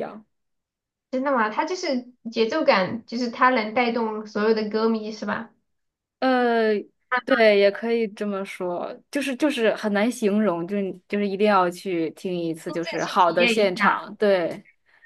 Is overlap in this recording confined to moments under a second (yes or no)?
no